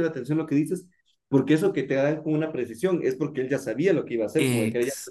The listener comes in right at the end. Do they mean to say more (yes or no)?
no